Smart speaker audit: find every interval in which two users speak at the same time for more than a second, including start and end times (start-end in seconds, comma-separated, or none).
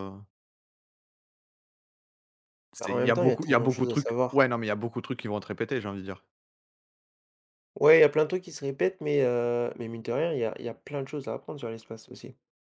2.8-4.4